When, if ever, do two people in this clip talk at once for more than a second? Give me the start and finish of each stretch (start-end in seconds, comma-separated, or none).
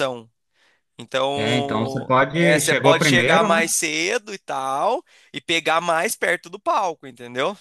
1.4-3.7